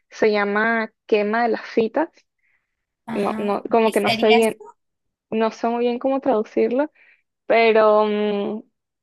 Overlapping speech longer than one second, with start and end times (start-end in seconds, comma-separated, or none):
3.1-4.6